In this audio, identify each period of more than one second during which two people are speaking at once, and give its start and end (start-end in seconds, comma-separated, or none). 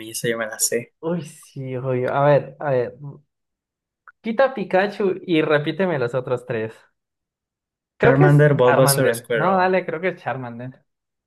8.0-9.7